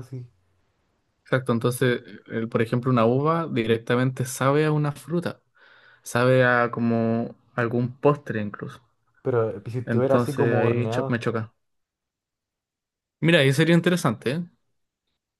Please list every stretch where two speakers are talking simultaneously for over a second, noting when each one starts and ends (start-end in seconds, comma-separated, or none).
9.8-11.2